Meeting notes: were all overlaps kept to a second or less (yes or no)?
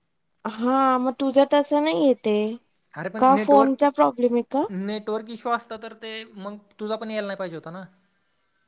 yes